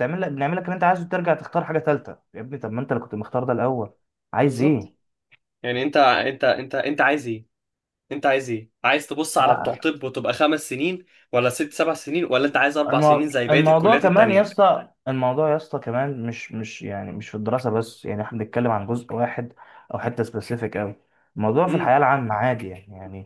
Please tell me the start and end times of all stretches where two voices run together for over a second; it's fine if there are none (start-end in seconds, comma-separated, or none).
12.9-14.5